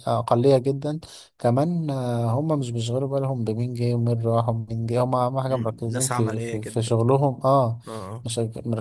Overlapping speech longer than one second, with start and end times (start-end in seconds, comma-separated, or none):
5.5-7.0